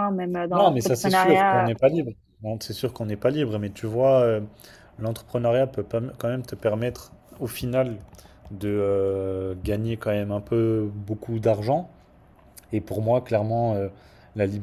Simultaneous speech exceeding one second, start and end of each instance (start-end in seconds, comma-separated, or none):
0.5-1.7